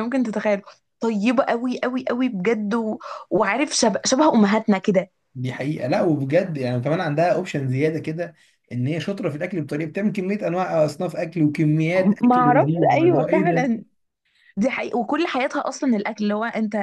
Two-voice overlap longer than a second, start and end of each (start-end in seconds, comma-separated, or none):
12.2-13.7